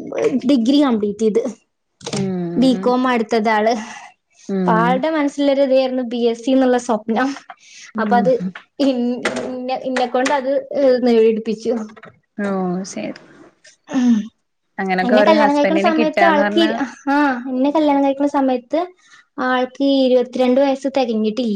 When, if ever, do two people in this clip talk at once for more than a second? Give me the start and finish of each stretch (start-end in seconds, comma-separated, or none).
15.1-16.7